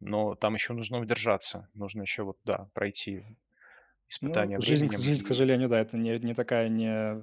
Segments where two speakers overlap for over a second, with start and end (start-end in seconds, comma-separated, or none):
4.2-5.4